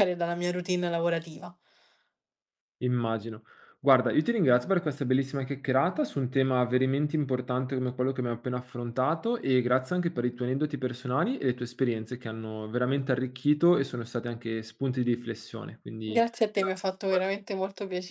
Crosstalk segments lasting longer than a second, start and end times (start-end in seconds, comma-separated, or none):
16.0-17.5